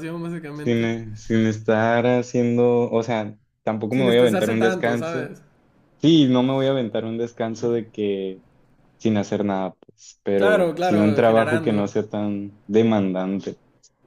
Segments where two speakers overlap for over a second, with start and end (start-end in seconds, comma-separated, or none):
3.9-5.3, 10.4-11.8